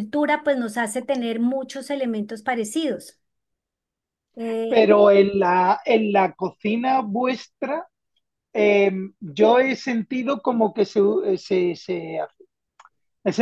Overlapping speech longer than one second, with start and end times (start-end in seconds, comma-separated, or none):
none